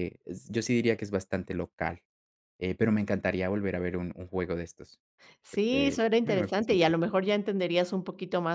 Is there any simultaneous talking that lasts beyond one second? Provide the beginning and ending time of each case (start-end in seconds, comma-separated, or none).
5.5-7.2